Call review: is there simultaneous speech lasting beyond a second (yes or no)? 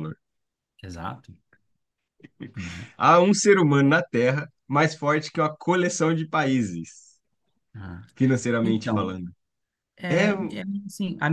no